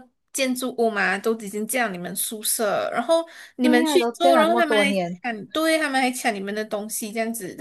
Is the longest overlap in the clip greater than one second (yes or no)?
yes